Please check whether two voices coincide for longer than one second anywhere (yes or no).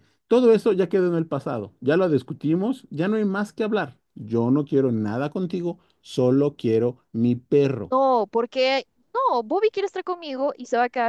no